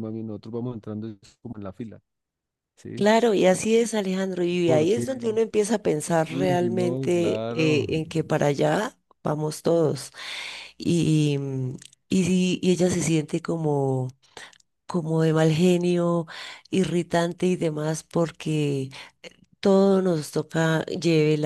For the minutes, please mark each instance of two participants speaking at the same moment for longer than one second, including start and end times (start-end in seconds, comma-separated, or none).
6.3-7.9